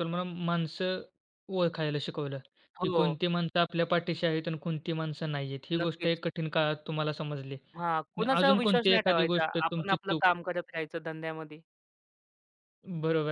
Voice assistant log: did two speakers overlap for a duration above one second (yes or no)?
yes